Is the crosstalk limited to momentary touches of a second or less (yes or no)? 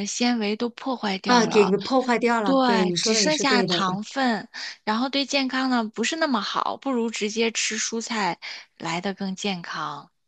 no